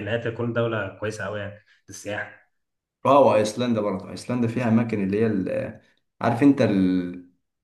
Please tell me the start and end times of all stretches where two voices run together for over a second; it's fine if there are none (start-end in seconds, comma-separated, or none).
none